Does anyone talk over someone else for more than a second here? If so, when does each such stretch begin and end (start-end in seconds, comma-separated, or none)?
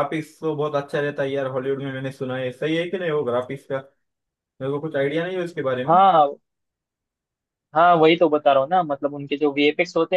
none